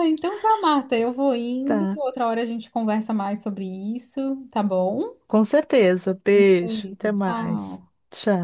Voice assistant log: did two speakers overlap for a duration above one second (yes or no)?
yes